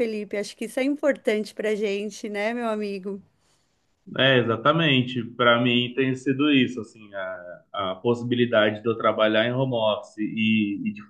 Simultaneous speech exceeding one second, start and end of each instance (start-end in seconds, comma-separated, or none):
none